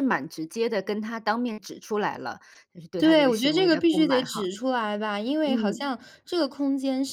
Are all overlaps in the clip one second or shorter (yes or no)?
no